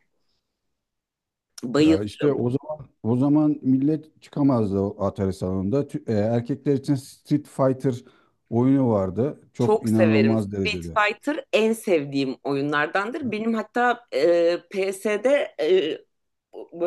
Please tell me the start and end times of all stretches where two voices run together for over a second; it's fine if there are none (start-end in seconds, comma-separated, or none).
9.6-11.0